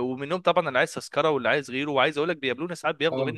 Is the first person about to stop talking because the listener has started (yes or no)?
no